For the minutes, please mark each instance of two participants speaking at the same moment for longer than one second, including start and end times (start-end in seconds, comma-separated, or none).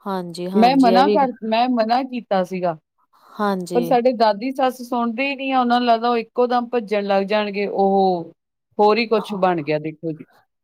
none